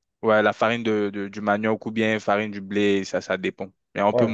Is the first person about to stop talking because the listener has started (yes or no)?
yes